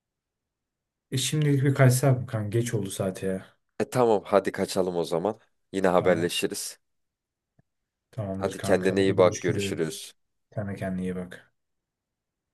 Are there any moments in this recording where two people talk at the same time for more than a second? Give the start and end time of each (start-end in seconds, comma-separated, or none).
8.4-10.0